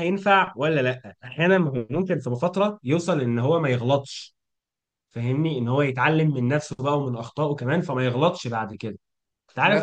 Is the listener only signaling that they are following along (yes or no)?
yes